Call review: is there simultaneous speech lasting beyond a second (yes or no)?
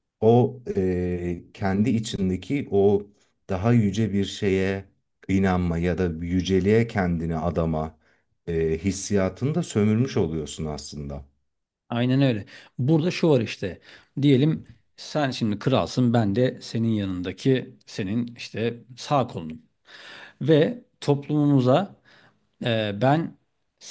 no